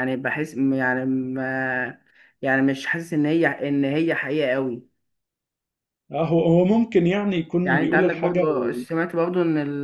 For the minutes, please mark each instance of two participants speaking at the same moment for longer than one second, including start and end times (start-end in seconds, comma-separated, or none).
7.6-8.8